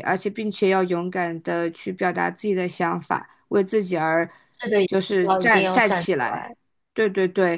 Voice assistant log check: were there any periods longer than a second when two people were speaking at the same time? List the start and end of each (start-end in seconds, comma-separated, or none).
4.8-6.5